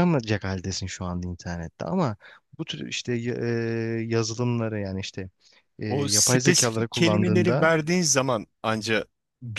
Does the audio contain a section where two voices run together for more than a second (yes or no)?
yes